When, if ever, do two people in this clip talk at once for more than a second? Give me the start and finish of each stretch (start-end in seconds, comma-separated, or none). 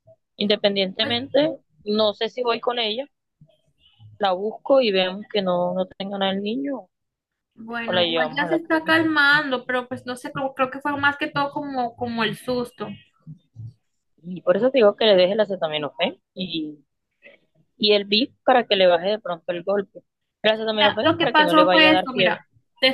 7.8-9.1, 20.8-22.4